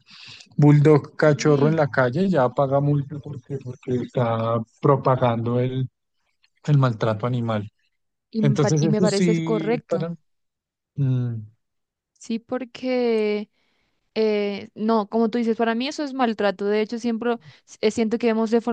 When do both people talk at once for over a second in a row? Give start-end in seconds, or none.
8.4-10.1